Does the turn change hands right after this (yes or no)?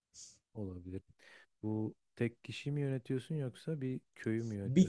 yes